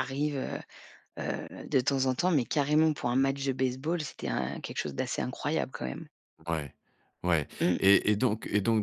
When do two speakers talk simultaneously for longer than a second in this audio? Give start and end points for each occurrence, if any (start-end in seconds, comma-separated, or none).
none